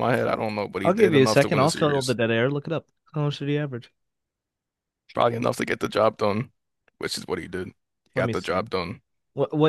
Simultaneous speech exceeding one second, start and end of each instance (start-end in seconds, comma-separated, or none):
0.8-2.2